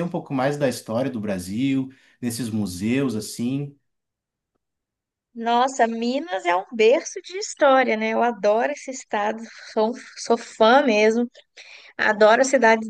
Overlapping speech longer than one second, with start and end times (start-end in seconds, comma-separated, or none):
none